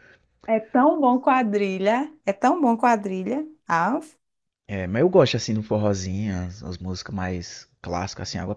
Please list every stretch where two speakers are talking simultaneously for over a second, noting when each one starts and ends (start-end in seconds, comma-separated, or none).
none